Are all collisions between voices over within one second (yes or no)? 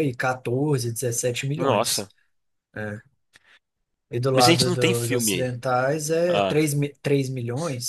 no